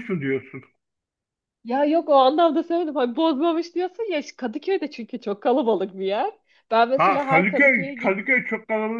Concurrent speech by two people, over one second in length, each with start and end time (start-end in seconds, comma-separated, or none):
7.0-8.3